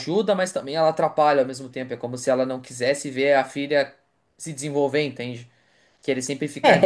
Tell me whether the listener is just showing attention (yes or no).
no